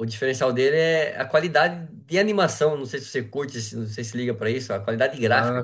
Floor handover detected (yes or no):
yes